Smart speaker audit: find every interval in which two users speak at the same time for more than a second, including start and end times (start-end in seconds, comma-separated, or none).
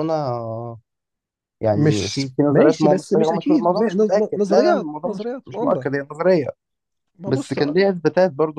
1.7-5.9